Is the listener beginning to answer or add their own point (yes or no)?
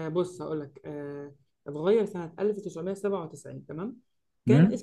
no